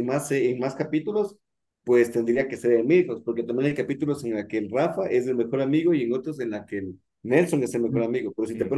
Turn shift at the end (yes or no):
no